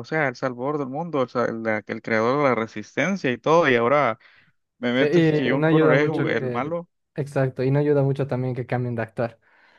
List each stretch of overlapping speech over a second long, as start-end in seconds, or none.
5.0-6.7